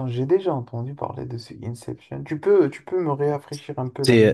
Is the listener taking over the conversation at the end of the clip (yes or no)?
yes